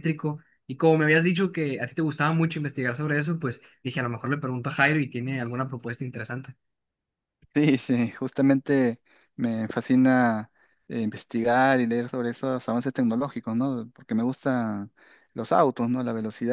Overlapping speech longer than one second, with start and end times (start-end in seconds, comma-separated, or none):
none